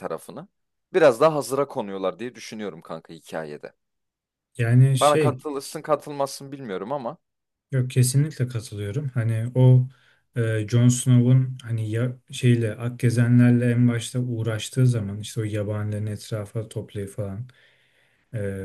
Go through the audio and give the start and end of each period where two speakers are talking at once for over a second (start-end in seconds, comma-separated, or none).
none